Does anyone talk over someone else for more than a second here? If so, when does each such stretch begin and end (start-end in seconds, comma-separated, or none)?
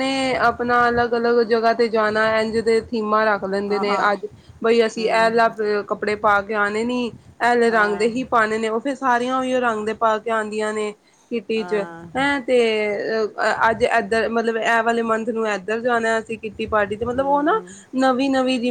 none